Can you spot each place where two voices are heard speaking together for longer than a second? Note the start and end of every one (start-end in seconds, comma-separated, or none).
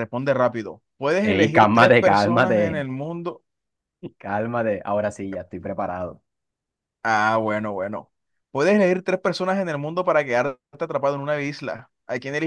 1.3-2.6